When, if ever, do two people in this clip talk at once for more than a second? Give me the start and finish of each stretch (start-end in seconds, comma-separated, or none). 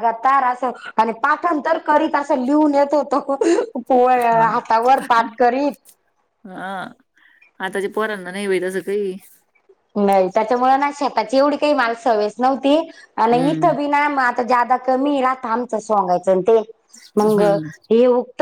none